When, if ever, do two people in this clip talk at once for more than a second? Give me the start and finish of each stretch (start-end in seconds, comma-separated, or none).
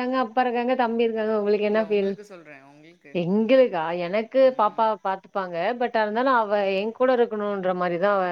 none